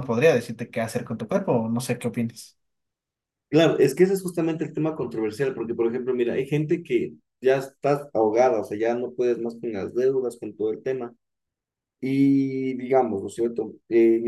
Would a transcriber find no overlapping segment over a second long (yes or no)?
yes